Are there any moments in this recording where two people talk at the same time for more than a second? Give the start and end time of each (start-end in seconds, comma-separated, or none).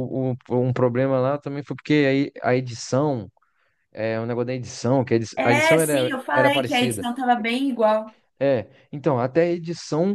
5.4-7.1